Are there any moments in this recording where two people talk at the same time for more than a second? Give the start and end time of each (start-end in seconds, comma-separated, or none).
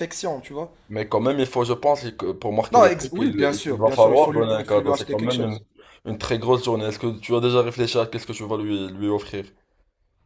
2.7-5.6